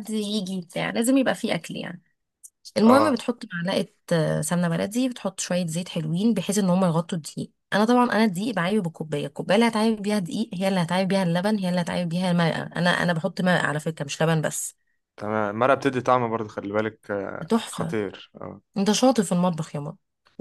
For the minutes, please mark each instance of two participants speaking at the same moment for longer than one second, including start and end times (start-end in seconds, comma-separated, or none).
none